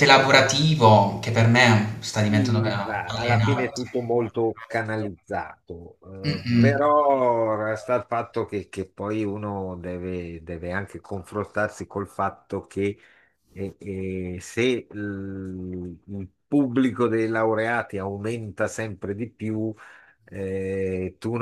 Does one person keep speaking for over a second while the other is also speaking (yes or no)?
yes